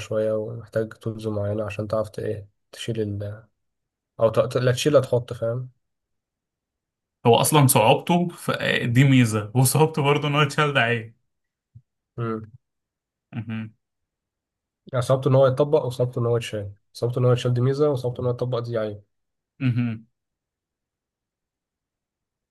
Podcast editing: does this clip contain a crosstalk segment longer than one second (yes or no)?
no